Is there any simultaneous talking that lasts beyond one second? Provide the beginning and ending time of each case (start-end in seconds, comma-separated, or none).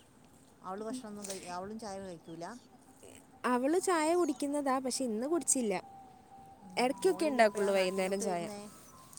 6.8-8.4